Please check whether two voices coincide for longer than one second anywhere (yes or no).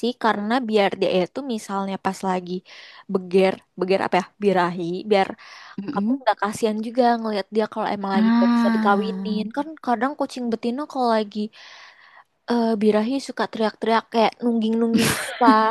yes